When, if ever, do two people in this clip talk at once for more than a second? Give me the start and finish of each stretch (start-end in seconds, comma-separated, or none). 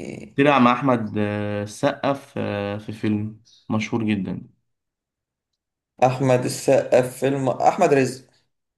none